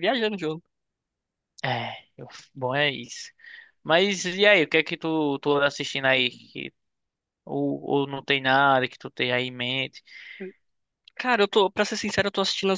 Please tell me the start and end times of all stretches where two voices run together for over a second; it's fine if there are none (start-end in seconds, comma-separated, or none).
none